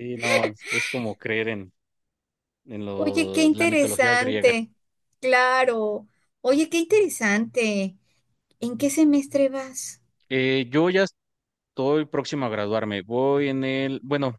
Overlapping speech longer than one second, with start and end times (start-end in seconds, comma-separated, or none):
3.0-4.6